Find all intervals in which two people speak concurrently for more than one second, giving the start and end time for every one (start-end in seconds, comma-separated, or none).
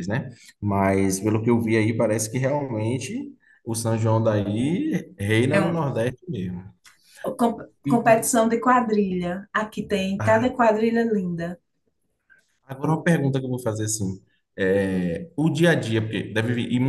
none